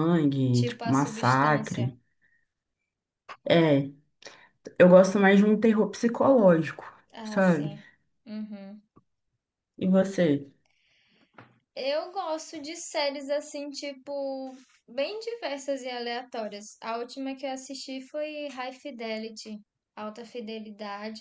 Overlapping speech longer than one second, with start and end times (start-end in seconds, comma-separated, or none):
0.5-1.9